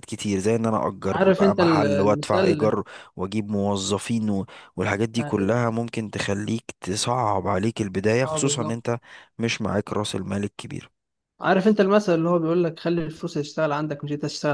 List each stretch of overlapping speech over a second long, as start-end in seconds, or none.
1.1-2.8